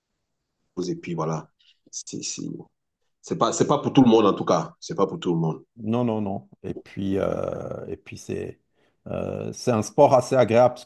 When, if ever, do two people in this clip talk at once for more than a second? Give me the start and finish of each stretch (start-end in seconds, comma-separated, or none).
none